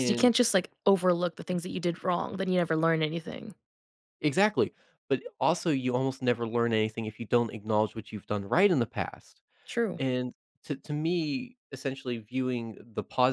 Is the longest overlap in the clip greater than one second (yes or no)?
no